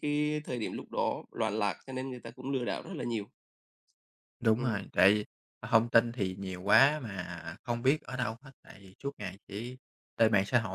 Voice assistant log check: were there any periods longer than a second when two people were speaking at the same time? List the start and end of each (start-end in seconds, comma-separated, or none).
none